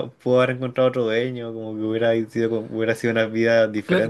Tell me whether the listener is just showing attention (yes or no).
no